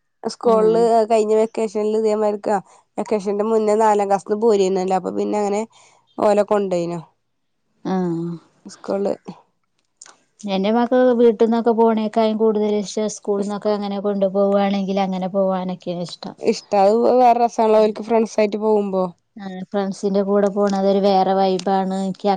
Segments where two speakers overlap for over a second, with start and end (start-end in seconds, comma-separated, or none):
none